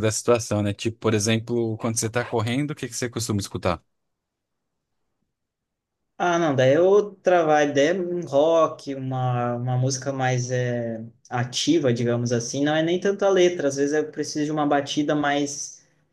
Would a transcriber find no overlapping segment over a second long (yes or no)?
yes